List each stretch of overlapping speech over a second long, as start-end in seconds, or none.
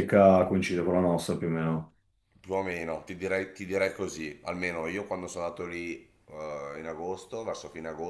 none